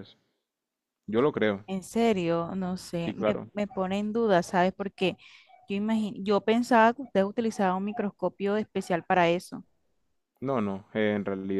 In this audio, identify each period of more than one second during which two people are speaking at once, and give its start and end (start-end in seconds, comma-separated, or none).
none